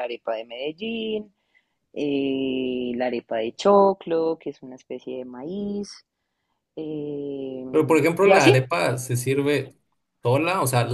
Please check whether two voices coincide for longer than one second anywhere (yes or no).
no